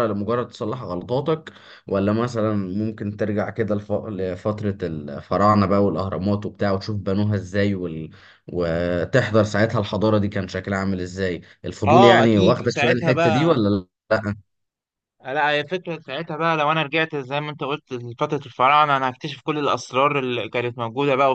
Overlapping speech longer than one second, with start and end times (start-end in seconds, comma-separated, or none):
11.9-13.6